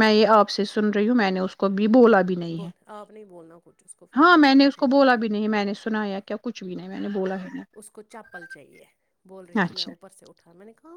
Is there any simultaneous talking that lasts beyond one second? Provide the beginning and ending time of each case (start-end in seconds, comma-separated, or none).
none